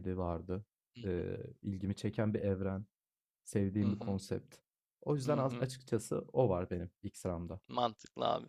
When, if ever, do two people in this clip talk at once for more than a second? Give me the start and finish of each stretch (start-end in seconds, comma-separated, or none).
none